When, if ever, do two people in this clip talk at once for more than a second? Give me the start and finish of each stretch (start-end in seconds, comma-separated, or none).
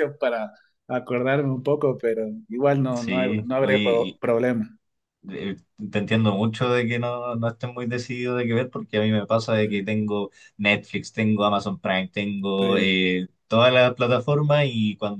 2.9-4.2